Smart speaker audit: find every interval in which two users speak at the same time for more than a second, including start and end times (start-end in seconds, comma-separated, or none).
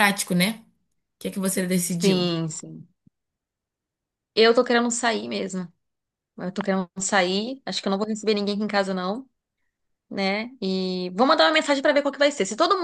none